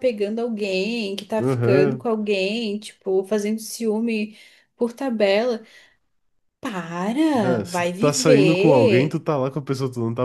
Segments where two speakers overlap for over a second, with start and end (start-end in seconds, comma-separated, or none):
7.4-9.2